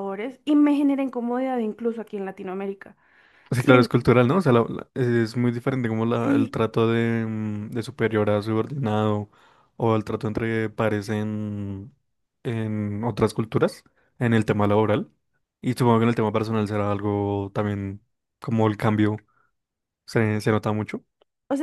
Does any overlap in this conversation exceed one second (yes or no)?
no